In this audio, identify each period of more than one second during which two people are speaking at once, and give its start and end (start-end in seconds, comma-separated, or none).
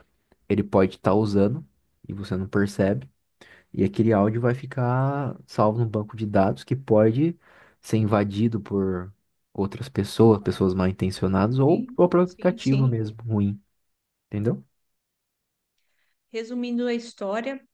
11.6-13.0